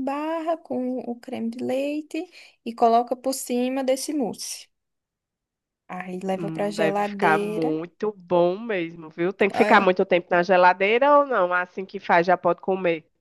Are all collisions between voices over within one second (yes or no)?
no